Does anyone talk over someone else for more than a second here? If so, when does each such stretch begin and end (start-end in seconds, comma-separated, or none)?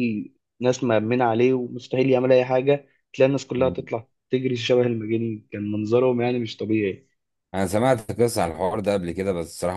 none